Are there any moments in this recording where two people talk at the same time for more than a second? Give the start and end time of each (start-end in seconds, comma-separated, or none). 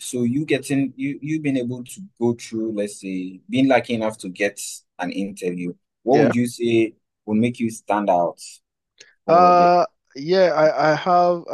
none